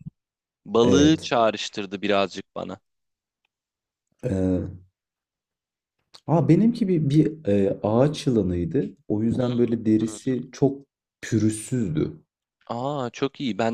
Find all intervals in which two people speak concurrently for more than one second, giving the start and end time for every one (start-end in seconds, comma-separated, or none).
none